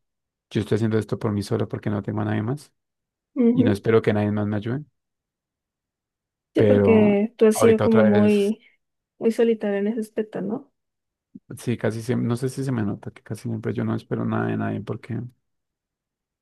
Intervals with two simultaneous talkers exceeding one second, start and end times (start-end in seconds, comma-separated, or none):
6.5-8.5